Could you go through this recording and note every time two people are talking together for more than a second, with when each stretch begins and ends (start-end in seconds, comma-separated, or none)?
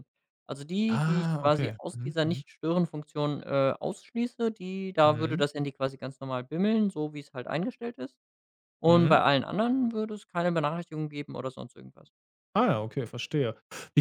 0.9-2.4